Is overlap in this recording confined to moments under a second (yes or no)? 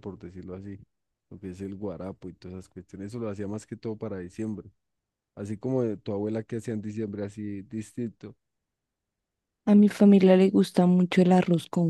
yes